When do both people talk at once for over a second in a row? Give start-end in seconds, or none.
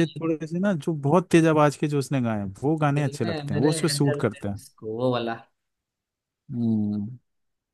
3.0-4.6